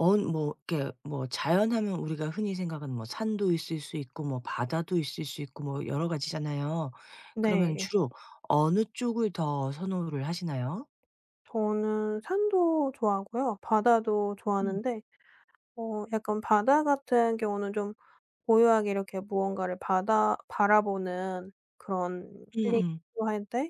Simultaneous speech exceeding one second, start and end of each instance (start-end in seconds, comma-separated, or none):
none